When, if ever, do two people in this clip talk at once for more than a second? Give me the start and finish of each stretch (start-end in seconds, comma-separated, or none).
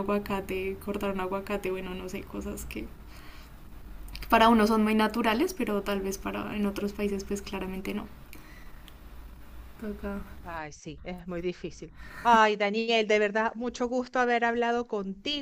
none